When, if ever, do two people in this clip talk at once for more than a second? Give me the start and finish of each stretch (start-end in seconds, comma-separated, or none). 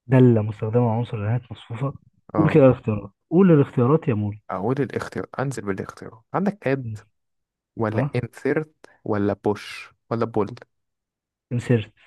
none